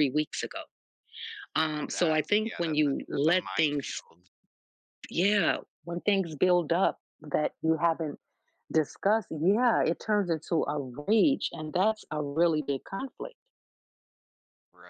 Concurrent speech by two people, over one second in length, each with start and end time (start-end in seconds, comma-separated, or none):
1.9-4.0